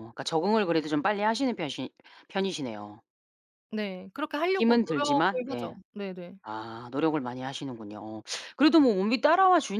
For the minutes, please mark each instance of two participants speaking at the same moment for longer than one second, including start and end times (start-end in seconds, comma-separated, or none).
4.5-5.8